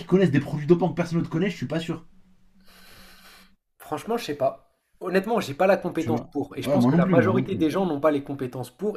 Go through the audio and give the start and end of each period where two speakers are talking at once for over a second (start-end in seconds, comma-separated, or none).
6.0-7.7